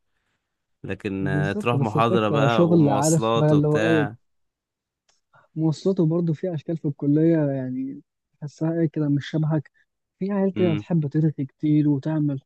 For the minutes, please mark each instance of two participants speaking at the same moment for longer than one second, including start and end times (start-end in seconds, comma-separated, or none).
1.2-4.1